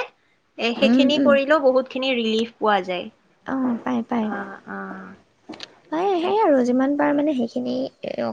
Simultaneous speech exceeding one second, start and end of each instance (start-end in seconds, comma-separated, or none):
none